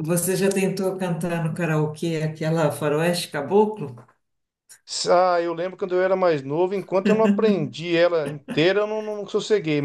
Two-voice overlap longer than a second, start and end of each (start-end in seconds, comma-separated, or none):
none